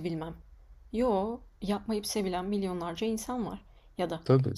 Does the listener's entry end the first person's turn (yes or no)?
no